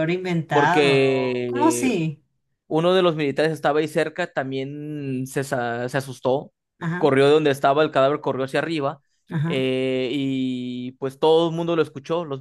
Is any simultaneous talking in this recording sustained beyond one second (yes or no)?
yes